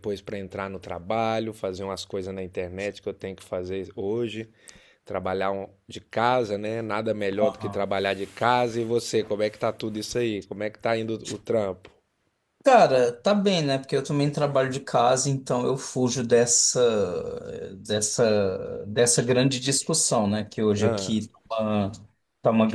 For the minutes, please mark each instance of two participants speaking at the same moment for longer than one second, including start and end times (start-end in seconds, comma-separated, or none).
none